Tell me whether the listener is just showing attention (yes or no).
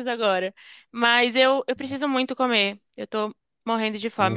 no